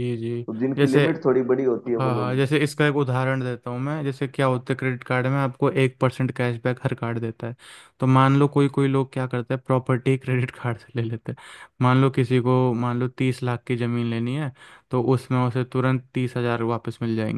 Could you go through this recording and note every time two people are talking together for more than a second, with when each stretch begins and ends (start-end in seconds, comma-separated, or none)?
none